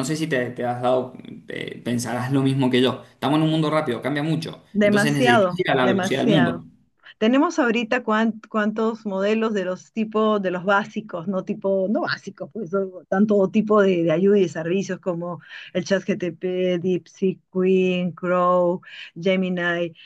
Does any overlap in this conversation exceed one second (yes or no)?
yes